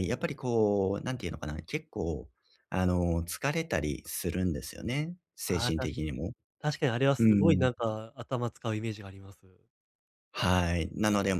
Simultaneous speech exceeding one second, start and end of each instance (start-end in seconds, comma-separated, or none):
none